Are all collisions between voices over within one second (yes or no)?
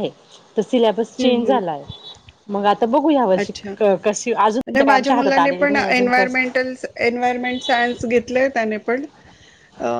no